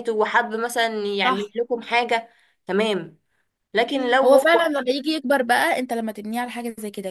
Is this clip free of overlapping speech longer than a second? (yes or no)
yes